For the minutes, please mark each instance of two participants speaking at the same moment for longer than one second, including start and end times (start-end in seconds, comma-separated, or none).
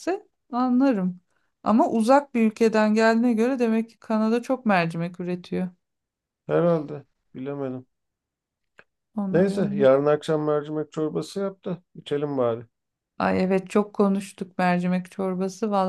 none